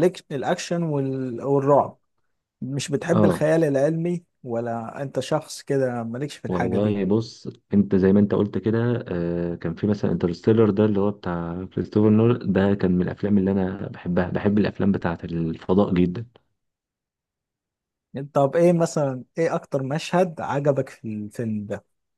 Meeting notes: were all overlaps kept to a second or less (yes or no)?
yes